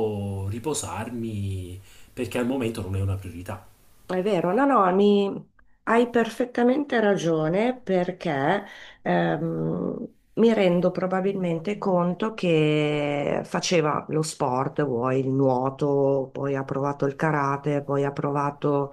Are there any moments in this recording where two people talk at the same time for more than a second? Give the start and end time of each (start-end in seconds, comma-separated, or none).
none